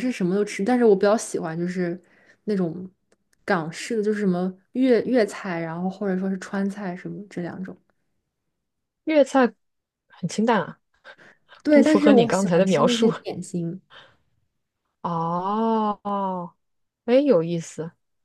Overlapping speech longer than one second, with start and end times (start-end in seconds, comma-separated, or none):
11.7-13.1